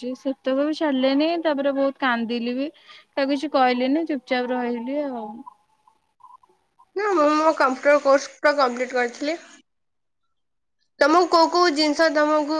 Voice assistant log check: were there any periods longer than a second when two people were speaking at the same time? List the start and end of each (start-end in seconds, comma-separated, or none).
none